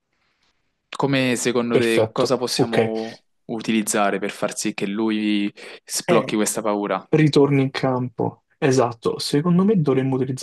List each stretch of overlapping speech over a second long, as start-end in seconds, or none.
1.7-2.9